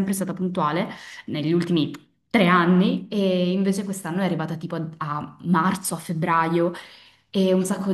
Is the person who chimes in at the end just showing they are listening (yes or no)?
yes